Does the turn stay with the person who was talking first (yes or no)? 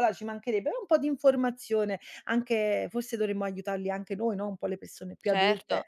no